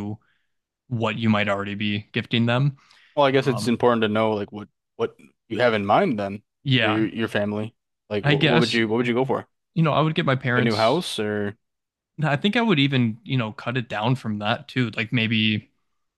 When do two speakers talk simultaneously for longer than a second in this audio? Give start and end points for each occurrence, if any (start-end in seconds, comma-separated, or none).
none